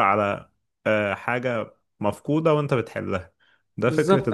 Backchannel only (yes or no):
no